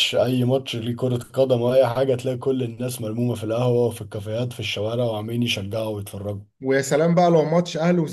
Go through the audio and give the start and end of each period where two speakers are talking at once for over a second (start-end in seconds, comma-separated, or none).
none